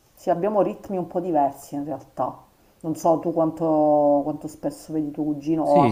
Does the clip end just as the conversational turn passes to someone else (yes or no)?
yes